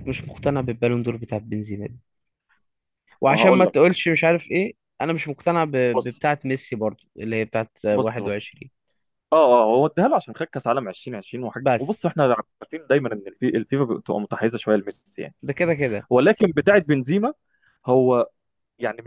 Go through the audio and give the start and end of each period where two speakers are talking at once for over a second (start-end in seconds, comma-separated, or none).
none